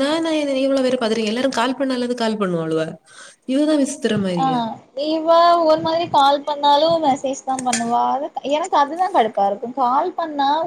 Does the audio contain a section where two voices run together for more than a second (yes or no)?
no